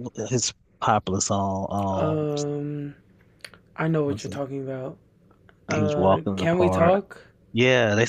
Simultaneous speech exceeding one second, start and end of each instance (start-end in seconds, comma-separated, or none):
5.7-7.0